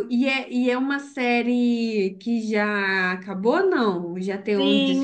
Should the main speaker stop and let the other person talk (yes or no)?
yes